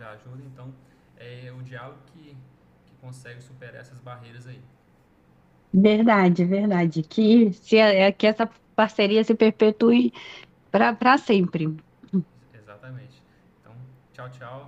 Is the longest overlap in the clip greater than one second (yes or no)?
no